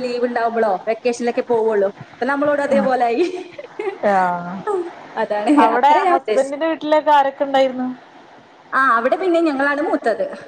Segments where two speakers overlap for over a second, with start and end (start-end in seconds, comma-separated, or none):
none